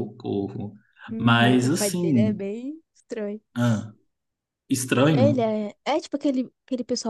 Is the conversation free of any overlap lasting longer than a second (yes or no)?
no